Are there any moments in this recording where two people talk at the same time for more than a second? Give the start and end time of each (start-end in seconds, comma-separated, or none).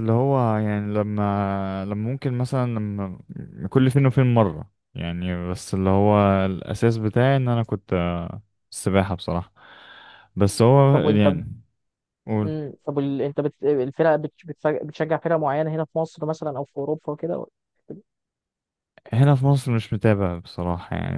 none